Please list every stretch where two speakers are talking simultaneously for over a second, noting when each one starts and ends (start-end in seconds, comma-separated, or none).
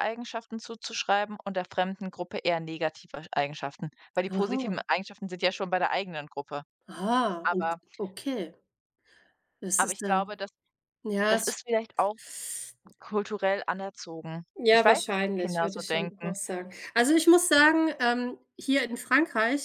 14.6-16.3